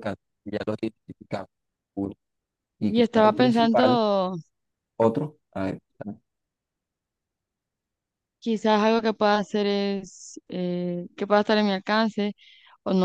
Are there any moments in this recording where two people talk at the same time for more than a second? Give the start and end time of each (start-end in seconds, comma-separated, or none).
2.8-4.0